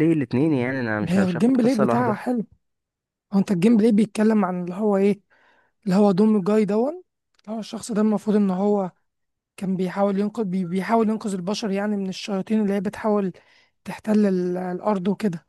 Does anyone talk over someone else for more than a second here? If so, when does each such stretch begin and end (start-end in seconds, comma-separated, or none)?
1.0-2.2